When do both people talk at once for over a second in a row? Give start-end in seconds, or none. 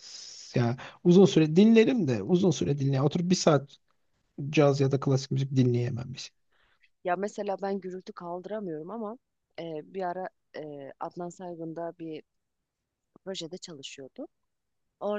none